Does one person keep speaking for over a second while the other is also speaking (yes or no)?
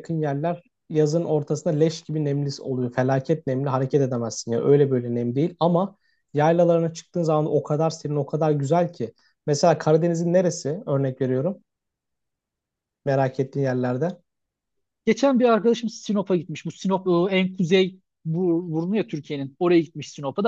no